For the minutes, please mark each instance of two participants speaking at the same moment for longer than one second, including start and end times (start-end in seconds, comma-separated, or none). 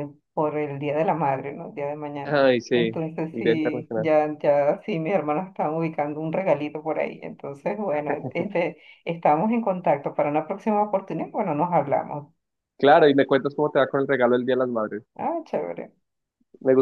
2.2-4.1